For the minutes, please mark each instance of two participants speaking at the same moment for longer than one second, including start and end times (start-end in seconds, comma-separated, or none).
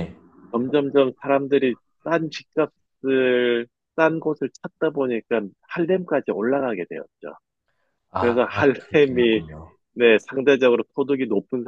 8.2-9.4